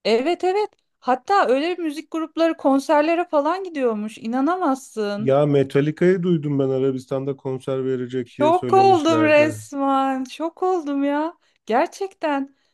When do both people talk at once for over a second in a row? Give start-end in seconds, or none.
8.2-9.6